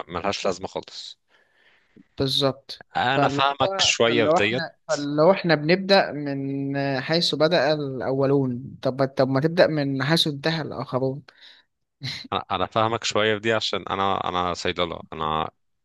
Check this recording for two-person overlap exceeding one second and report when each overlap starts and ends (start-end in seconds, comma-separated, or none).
3.0-4.7